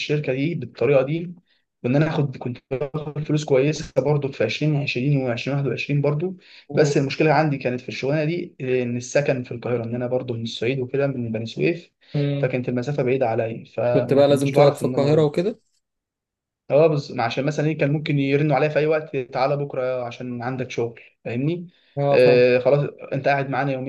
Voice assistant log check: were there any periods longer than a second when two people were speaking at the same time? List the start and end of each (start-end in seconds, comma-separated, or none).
13.9-15.3